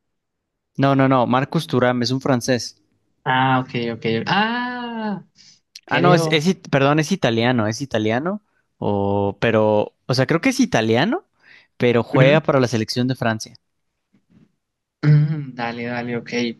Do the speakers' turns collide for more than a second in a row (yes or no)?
no